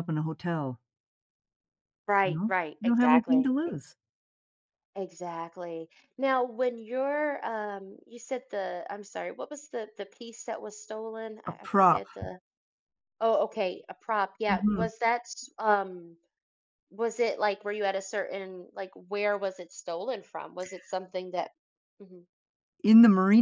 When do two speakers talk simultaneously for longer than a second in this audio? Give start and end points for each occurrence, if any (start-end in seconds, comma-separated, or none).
2.2-3.9